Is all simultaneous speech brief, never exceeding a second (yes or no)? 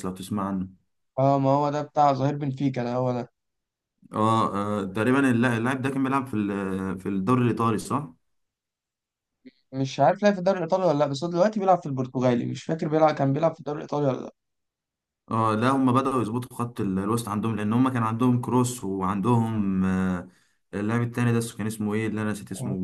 yes